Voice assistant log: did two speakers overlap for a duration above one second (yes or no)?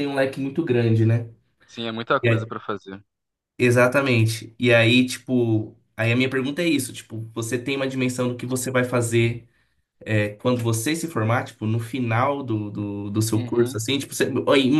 no